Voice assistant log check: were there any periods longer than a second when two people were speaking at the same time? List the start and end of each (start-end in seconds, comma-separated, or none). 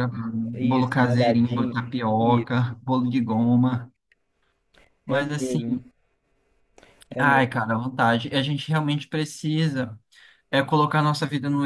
0.5-2.7